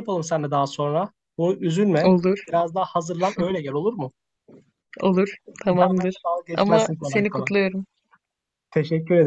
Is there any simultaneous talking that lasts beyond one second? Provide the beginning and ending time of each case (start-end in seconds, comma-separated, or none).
5.7-7.5